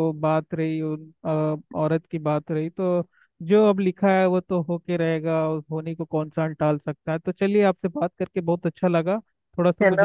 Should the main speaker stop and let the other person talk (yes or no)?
no